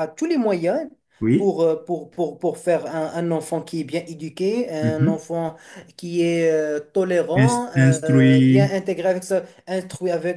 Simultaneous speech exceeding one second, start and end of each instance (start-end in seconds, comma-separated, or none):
7.4-8.8